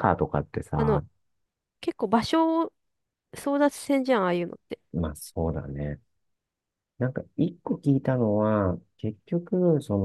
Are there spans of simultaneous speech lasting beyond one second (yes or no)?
no